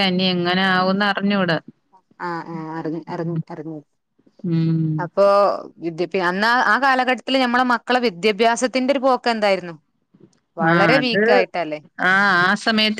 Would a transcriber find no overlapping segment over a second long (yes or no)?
yes